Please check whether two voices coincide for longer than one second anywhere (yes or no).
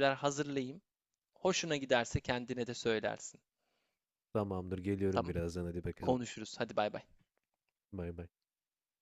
no